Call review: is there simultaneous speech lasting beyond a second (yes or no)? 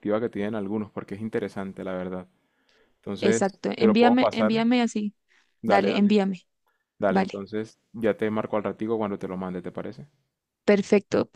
yes